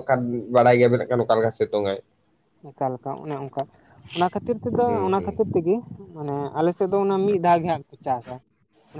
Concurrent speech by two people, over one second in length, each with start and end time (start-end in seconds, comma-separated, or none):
none